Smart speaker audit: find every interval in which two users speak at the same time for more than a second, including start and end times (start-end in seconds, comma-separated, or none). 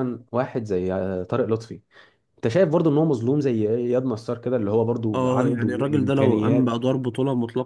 5.1-6.7